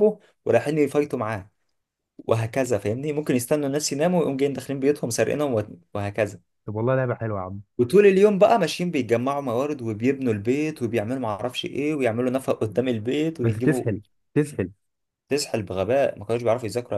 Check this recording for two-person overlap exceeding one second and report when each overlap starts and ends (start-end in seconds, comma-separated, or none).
none